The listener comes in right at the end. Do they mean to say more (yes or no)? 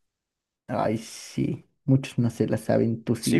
yes